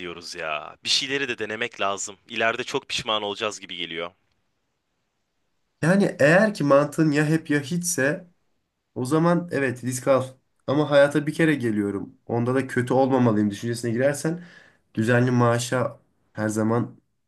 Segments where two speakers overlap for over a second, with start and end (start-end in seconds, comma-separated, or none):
none